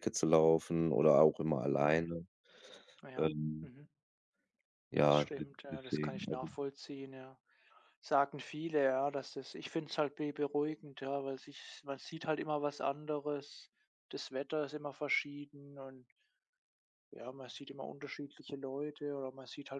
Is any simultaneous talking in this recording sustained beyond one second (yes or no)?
yes